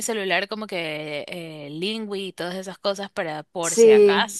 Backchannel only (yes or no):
yes